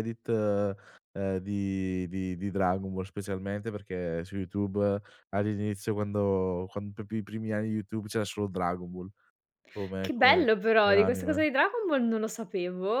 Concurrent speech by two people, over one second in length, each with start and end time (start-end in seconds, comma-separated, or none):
10.0-11.4